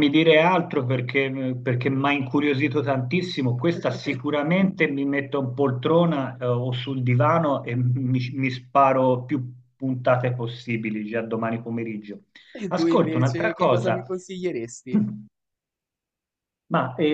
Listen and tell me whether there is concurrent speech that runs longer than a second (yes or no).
yes